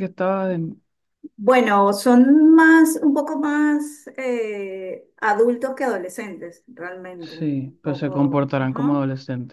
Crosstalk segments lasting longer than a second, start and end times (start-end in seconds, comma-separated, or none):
7.2-9.0